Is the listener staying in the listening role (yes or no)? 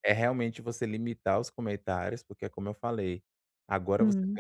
yes